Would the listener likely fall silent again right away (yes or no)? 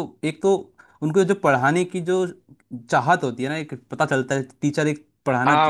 no